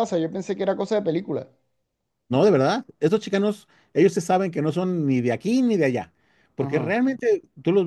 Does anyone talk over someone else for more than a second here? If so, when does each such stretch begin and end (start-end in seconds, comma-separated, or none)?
none